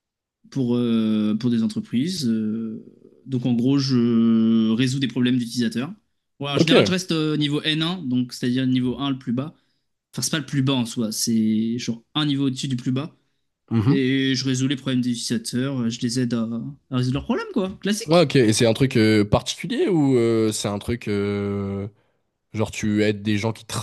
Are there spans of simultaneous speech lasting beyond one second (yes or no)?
no